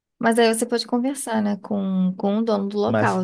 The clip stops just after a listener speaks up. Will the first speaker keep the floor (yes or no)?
no